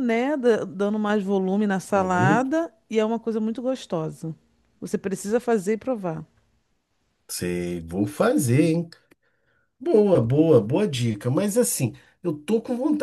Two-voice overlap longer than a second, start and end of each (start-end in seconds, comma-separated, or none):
none